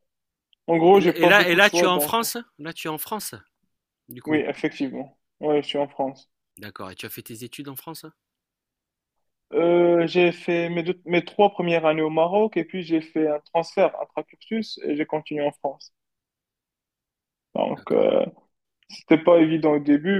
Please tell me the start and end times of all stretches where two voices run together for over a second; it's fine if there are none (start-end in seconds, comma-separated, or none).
0.9-2.2